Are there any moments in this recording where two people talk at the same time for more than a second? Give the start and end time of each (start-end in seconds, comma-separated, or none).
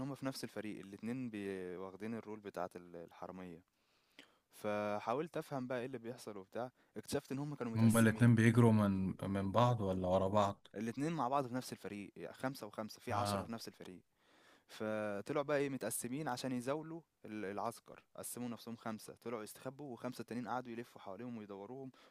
none